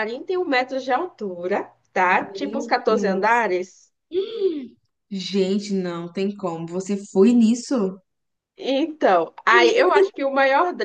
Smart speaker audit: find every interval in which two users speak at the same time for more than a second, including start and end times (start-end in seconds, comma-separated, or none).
2.0-3.5